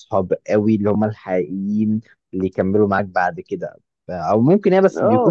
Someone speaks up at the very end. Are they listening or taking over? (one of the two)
taking over